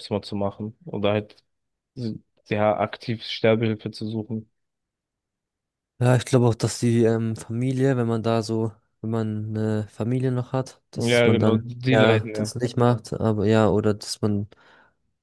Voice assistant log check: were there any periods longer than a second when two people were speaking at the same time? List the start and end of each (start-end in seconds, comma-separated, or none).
10.9-12.5